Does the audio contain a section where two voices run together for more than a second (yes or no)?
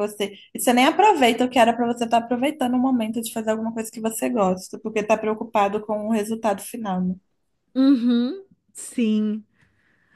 no